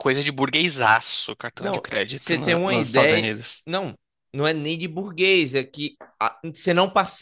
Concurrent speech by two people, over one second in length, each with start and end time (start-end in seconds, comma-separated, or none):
1.6-3.6